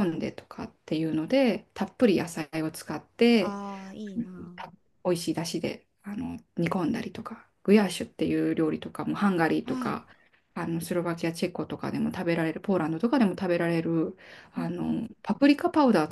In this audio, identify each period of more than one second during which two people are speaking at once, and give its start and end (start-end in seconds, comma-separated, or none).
none